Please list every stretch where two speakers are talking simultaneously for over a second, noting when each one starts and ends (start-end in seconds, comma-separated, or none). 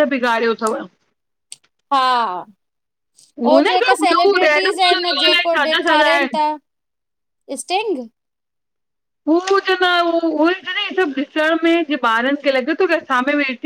3.7-6.4